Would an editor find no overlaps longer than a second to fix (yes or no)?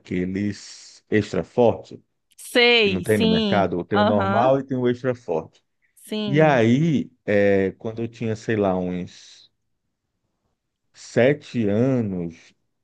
no